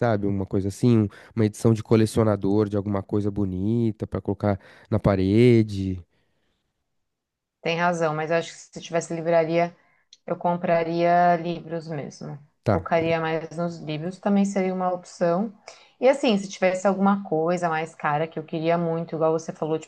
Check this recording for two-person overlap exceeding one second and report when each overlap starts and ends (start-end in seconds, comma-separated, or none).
none